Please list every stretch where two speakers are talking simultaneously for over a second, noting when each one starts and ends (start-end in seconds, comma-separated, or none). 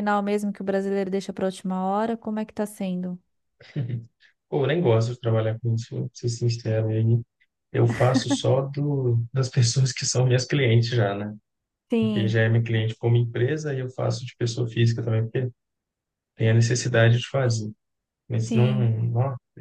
none